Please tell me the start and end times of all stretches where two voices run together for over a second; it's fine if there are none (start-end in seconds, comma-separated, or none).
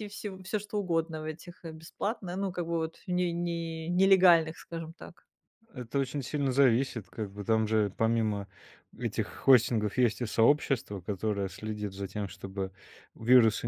none